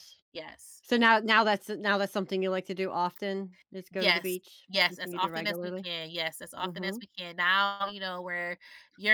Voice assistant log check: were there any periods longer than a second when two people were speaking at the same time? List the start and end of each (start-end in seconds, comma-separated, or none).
3.9-5.9